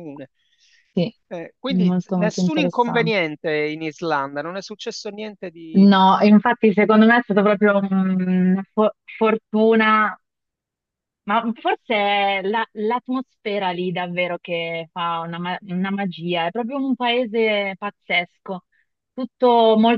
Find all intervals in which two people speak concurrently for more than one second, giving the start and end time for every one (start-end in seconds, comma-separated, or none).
1.7-3.2